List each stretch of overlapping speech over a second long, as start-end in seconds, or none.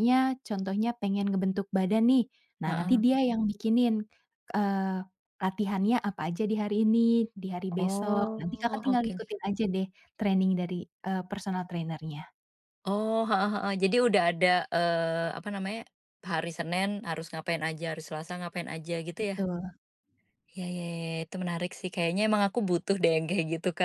7.8-9.1